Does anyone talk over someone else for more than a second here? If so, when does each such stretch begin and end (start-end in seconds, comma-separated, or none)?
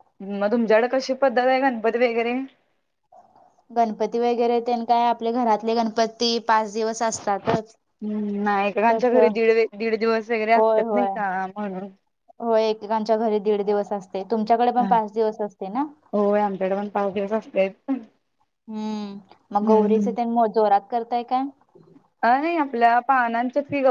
none